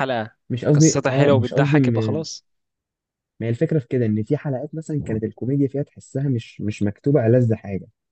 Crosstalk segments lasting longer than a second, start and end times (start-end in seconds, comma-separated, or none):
0.7-2.2